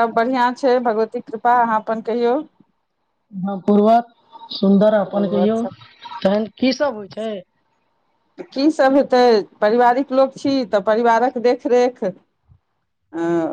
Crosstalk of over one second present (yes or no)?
no